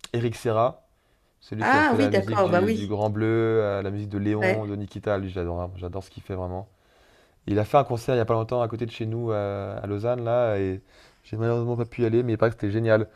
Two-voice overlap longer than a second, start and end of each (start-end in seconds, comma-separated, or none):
1.6-3.0